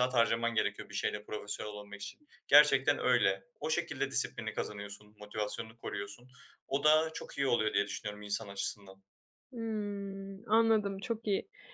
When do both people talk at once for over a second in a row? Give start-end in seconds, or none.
none